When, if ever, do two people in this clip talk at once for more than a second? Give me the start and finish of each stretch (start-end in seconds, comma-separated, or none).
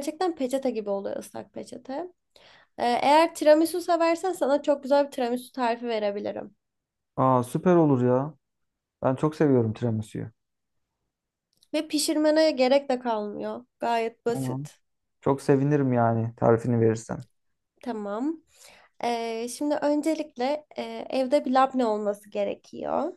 none